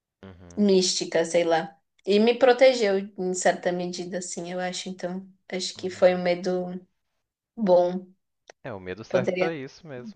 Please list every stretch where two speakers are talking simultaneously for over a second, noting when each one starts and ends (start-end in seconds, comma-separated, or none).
none